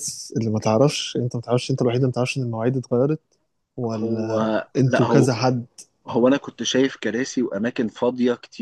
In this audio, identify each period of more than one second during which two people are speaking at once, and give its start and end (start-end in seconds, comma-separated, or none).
3.9-5.3